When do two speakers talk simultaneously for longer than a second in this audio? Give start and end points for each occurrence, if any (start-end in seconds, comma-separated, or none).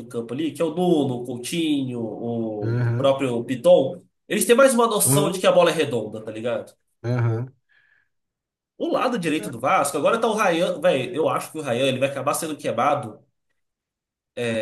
none